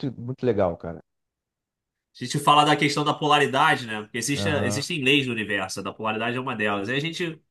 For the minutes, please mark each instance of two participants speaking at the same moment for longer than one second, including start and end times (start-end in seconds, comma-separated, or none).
none